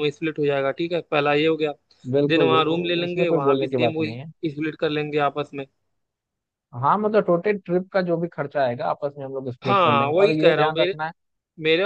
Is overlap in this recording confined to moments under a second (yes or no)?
no